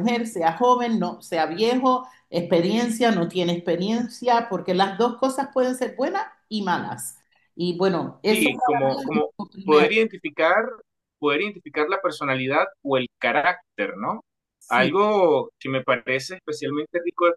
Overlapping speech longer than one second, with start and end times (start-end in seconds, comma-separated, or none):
8.2-9.9